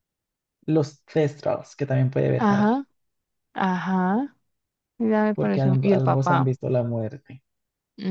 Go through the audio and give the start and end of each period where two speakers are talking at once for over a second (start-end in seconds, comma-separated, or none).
5.3-6.5